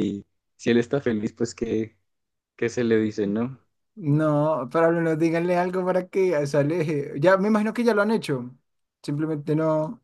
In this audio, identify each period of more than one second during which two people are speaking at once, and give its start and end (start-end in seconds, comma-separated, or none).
none